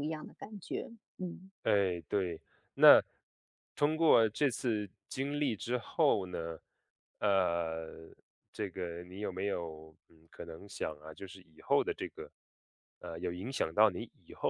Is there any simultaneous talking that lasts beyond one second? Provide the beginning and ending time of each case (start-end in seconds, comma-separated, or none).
none